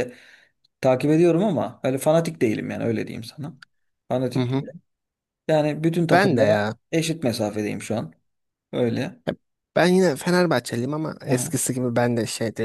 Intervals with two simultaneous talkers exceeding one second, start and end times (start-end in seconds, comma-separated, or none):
none